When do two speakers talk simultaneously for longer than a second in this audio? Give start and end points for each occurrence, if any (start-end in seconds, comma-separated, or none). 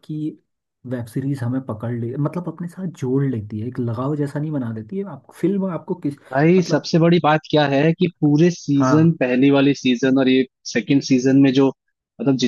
none